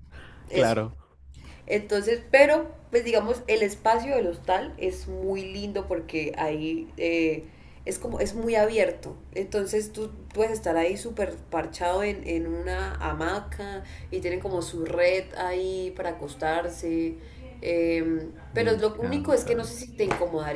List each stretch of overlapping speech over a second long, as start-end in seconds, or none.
18.5-19.7